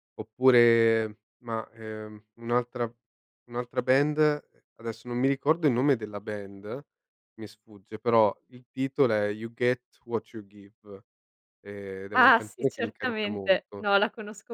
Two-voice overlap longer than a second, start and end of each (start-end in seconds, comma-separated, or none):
12.1-13.8